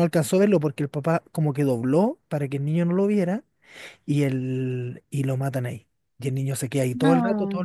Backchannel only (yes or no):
yes